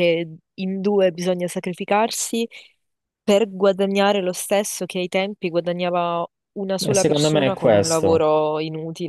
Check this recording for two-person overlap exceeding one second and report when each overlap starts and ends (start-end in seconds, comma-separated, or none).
6.8-8.3